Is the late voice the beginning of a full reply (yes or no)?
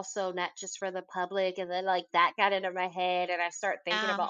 no